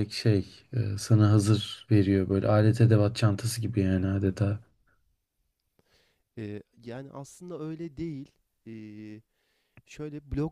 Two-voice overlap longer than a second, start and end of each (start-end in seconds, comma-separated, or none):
none